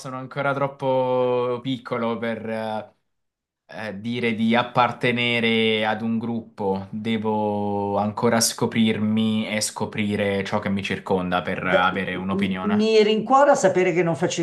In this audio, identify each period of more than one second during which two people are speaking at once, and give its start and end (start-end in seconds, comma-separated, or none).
11.6-12.9